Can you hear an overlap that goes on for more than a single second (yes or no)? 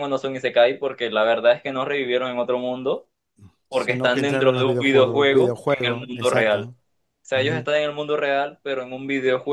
yes